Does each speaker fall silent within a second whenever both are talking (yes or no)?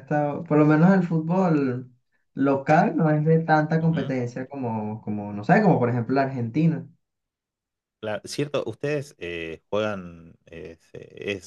yes